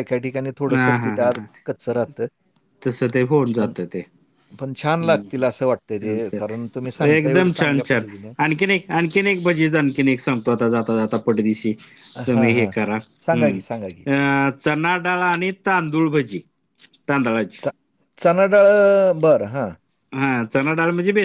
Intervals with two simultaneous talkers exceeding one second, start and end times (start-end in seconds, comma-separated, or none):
6.0-8.1